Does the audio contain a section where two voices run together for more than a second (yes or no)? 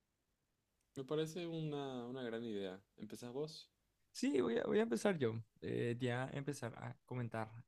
no